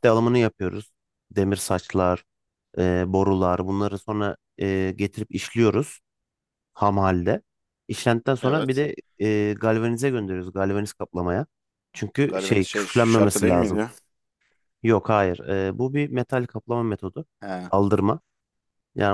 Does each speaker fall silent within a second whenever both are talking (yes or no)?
no